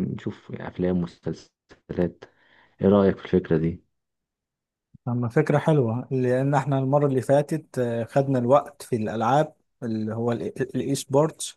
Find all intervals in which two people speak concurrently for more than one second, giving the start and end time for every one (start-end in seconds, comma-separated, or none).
none